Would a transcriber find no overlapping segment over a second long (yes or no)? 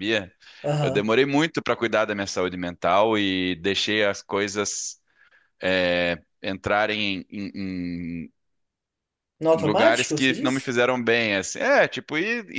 no